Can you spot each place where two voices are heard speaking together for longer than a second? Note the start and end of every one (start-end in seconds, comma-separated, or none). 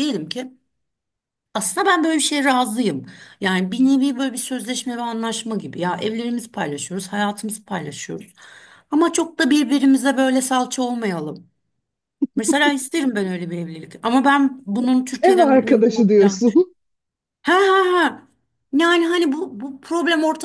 15.2-16.7